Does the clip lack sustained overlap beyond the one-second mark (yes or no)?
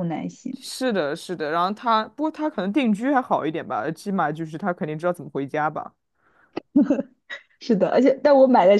yes